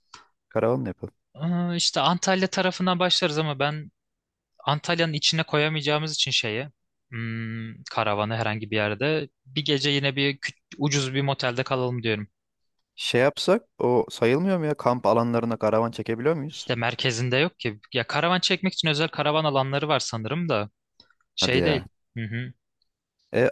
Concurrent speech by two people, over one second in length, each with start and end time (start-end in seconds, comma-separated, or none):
none